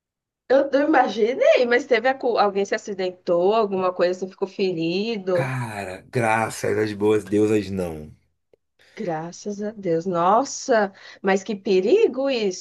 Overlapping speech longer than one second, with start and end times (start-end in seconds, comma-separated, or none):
none